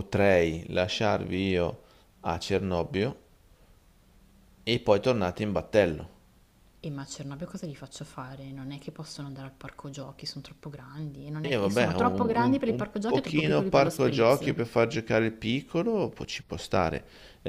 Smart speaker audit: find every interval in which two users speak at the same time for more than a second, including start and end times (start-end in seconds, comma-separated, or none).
11.5-14.5